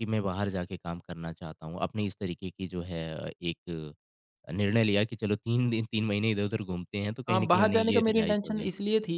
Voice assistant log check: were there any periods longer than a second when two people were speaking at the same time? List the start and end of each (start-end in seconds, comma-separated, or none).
7.3-8.7